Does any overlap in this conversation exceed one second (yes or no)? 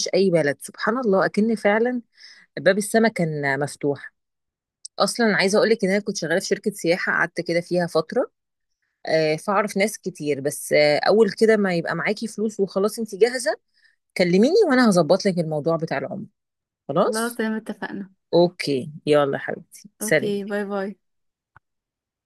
no